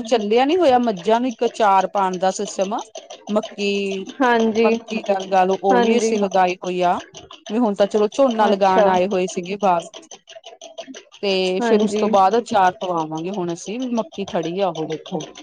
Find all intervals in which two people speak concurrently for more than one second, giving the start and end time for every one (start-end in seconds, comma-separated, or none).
none